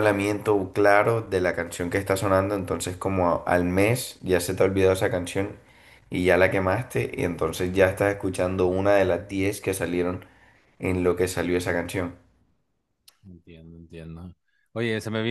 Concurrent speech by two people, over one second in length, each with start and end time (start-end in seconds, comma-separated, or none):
none